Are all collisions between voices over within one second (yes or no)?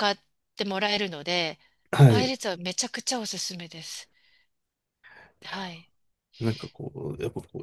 yes